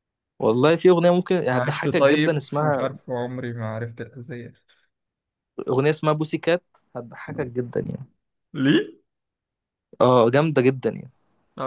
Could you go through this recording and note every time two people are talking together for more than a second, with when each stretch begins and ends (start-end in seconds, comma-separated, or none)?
1.5-2.9